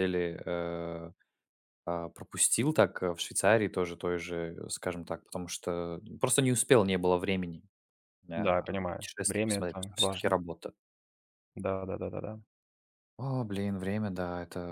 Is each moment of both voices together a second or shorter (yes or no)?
no